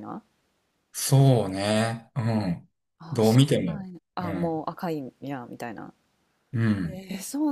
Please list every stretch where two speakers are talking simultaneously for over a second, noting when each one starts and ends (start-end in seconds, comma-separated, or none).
3.1-4.6